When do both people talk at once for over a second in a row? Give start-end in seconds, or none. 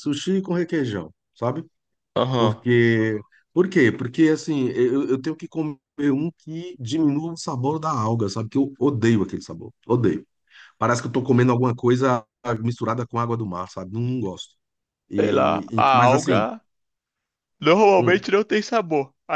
15.2-16.4